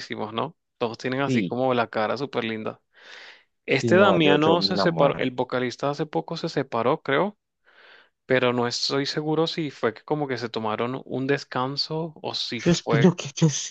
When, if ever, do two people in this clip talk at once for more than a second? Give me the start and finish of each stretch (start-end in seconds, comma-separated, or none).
3.8-5.4